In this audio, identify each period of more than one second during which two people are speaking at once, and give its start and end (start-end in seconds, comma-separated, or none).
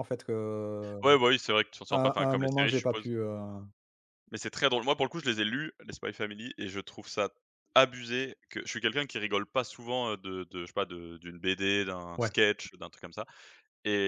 1.9-3.1